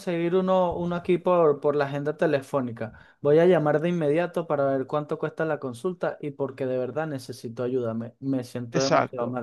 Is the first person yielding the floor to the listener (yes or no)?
yes